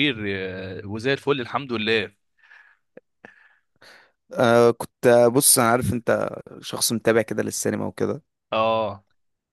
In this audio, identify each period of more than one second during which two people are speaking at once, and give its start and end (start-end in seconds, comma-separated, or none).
none